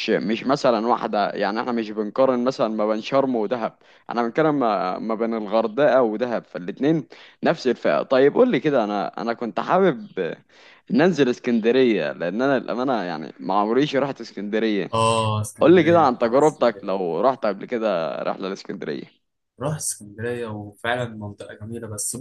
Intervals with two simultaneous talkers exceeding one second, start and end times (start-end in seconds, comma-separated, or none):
15.6-17.1